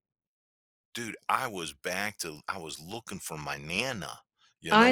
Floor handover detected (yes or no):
yes